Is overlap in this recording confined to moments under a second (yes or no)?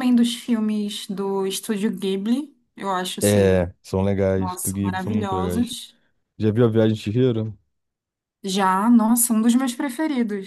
no